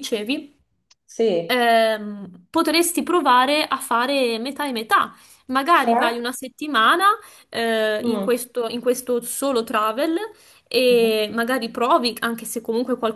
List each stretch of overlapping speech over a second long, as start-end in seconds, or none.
none